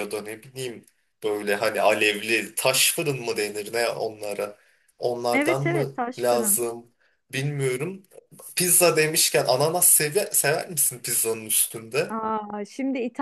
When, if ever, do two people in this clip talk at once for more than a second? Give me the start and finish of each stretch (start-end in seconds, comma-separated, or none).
5.3-6.6